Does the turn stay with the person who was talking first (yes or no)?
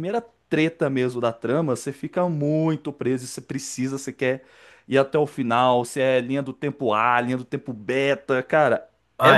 no